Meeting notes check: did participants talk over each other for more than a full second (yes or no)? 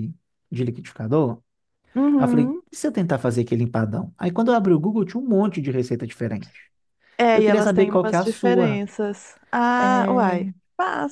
yes